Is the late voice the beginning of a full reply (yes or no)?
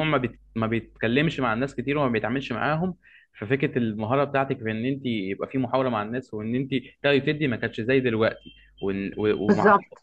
no